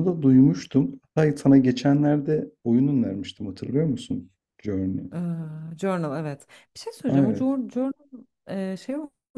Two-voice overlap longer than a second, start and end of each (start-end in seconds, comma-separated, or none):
none